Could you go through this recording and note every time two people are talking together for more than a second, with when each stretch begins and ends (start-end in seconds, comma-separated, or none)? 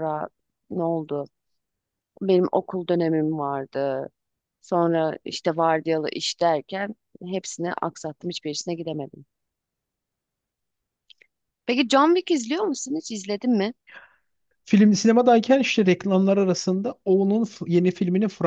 none